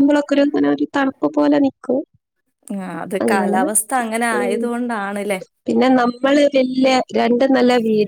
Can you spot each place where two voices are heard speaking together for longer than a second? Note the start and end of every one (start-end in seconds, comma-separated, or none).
none